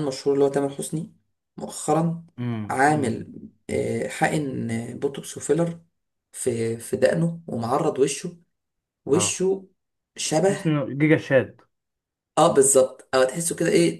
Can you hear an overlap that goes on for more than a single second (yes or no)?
no